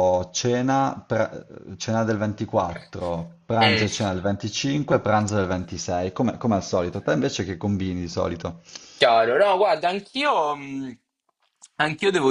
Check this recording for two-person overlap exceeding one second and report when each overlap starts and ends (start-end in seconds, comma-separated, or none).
none